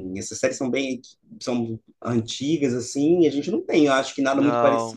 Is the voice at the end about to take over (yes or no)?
yes